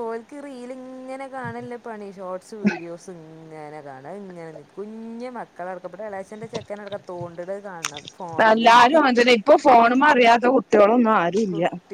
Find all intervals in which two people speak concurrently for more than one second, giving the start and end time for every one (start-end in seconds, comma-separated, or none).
none